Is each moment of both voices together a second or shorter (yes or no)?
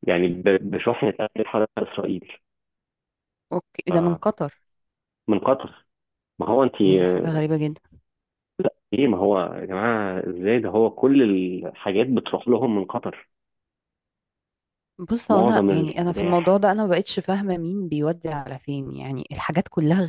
no